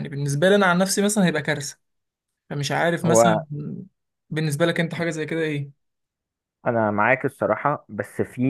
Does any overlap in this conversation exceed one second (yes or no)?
no